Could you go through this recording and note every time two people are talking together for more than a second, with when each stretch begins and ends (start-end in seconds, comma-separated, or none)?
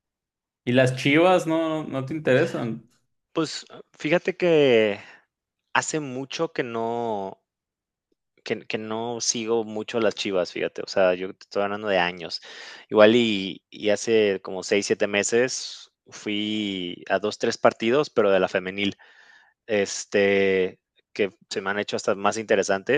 none